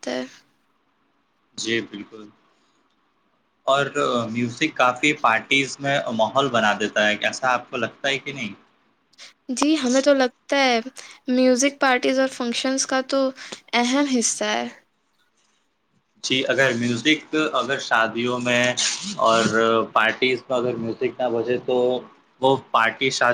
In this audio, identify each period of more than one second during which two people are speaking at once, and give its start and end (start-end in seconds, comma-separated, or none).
none